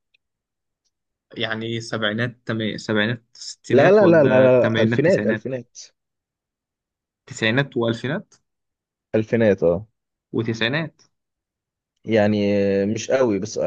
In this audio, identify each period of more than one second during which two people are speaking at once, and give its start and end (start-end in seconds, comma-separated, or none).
3.7-5.5